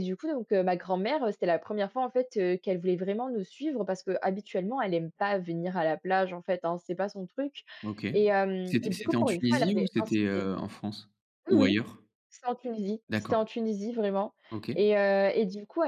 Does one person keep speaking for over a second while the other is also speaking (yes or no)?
yes